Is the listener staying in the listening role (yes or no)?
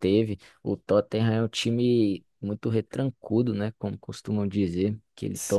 yes